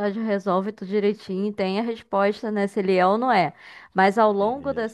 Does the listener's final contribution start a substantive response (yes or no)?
no